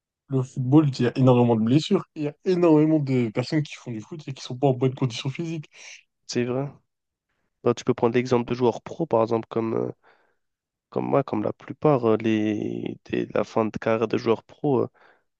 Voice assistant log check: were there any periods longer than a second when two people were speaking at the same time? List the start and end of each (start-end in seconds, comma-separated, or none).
none